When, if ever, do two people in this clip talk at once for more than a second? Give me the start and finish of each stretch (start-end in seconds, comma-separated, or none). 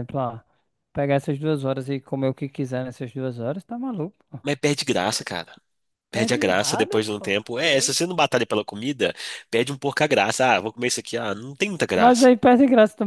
6.1-7.9